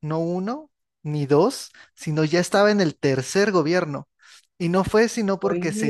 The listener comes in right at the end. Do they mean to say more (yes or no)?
no